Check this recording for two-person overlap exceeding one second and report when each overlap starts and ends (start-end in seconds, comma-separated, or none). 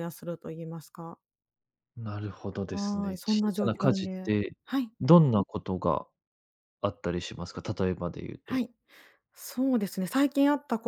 2.7-4.5